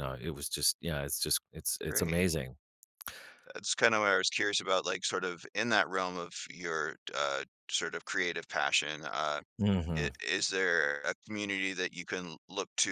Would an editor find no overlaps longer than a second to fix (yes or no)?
yes